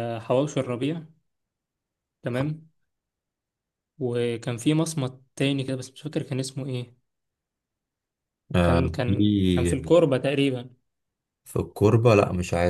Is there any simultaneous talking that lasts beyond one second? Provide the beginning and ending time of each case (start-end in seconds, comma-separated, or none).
none